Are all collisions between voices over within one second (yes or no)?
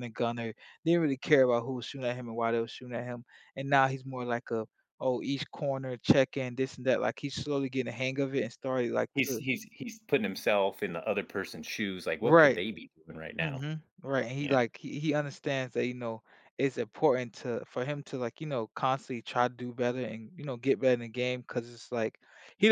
yes